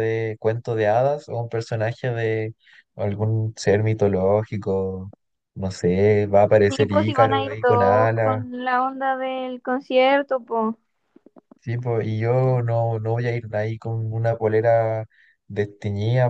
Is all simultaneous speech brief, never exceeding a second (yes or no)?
no